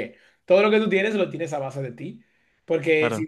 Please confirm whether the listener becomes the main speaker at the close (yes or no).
no